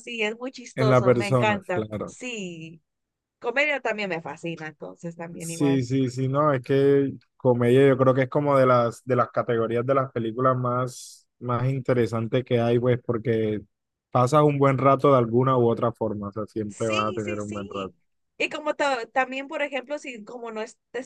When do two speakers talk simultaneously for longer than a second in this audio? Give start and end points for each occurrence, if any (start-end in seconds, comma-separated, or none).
0.8-2.1, 16.7-17.9